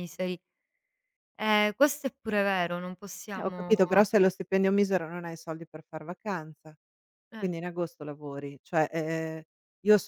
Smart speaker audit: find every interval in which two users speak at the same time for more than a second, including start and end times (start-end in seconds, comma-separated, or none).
none